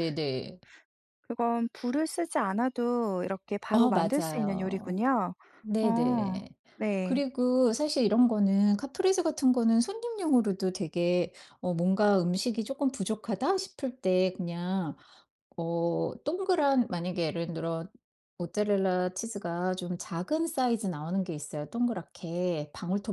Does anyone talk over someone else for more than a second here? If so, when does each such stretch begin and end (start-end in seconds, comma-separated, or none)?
3.7-5.0